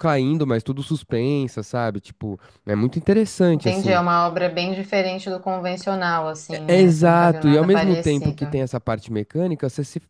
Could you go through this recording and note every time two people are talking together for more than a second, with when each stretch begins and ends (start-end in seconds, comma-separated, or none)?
6.5-8.5